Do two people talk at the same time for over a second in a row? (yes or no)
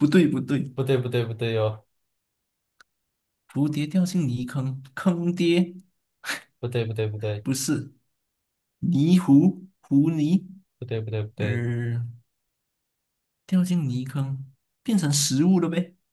no